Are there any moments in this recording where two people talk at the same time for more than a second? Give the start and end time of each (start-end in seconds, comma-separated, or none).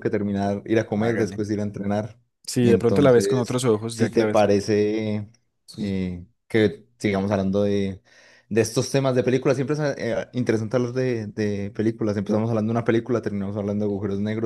2.6-4.6